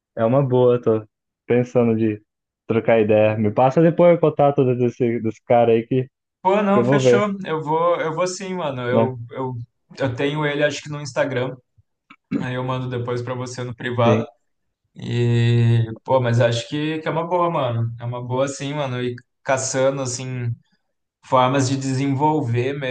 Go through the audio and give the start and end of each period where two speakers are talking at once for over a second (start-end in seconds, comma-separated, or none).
none